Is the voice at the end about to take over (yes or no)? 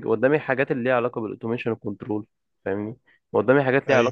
no